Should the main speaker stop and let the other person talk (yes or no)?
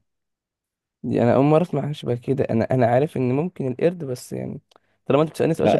yes